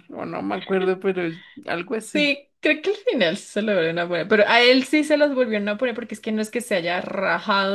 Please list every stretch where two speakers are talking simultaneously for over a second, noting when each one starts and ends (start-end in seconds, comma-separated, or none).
none